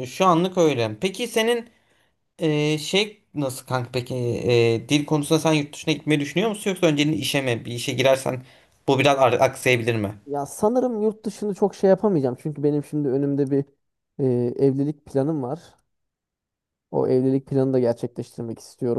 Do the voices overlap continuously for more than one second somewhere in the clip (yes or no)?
no